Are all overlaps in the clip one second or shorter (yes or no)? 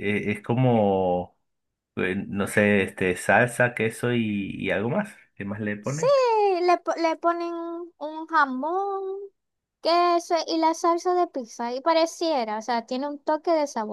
yes